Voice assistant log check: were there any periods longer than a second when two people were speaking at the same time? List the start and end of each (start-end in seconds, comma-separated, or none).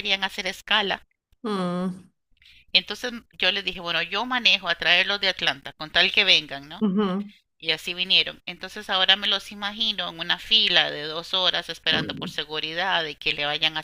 none